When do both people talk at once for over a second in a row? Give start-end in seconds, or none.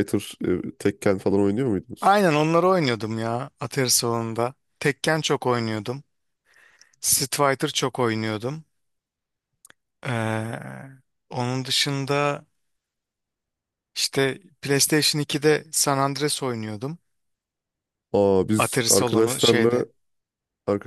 18.6-19.9